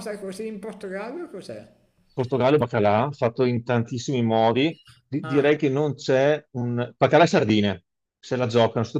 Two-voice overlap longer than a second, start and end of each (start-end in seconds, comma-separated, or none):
none